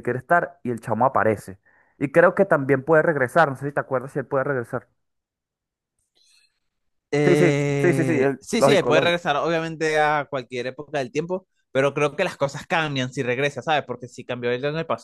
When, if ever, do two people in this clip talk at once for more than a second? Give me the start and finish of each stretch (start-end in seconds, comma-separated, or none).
7.2-9.3